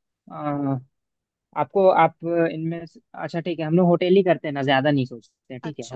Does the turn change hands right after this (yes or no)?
yes